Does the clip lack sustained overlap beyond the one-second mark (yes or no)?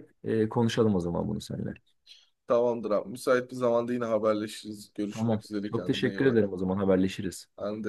no